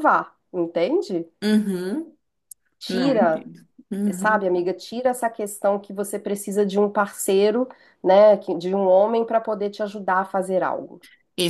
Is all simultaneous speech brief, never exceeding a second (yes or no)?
yes